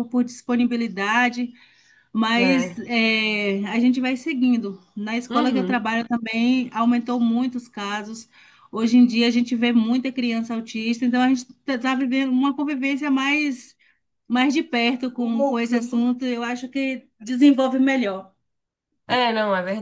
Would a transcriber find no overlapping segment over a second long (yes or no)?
yes